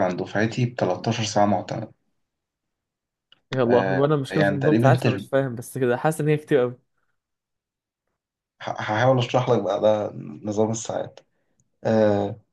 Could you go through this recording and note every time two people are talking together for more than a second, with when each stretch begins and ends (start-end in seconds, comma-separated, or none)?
3.7-5.3